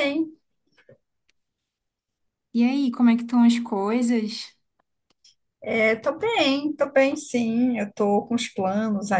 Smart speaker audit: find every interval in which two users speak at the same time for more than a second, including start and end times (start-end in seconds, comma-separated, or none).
none